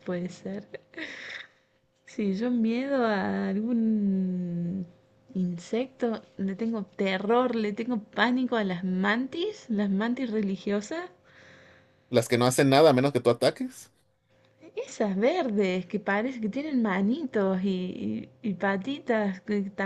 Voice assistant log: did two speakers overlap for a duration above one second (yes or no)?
no